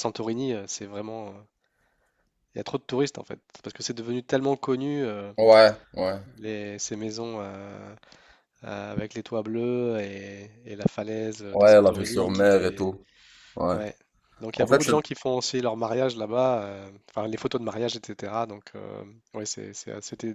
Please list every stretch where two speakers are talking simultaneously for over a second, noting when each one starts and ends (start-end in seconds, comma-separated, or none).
11.5-12.8